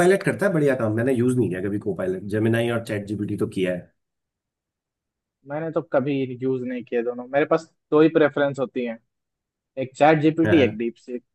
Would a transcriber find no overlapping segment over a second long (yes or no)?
yes